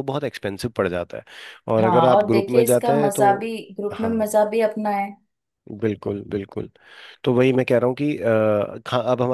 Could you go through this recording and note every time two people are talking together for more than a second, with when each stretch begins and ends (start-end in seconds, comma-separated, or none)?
1.8-3.3